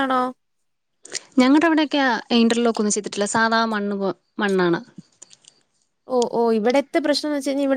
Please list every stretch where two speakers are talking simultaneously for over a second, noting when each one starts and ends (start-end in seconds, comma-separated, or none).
none